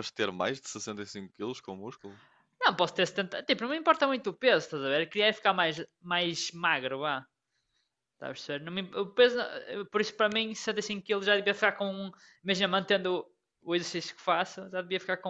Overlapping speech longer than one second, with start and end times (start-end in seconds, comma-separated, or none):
none